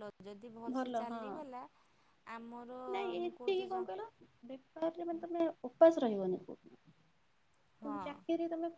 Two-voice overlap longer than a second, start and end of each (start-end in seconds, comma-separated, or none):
none